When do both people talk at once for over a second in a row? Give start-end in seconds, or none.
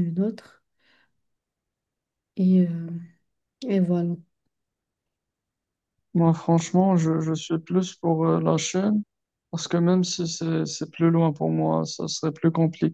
none